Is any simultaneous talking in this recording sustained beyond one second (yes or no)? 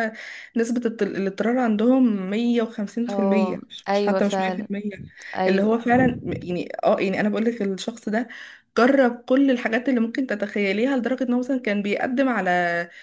yes